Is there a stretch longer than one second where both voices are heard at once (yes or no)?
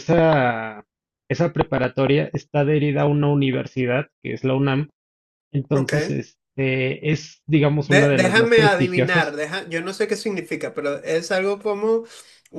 yes